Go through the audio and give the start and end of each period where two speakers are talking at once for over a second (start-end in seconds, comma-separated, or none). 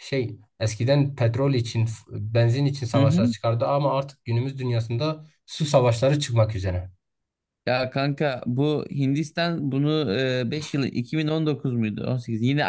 none